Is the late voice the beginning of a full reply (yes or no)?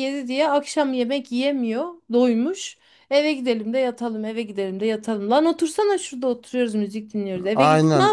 yes